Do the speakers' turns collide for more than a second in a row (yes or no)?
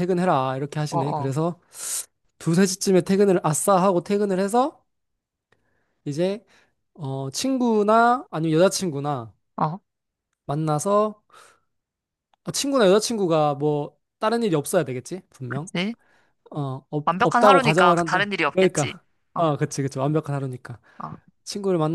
yes